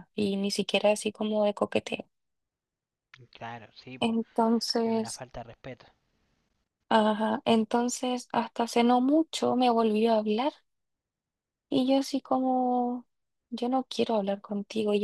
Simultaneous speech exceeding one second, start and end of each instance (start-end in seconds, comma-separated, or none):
none